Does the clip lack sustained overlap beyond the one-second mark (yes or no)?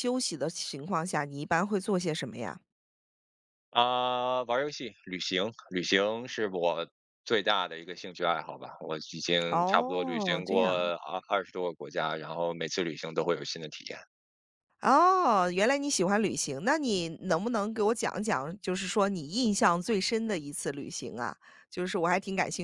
no